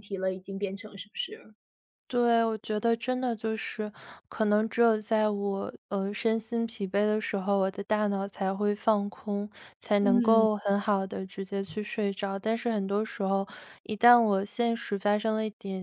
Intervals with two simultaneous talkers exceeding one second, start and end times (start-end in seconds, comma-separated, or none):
none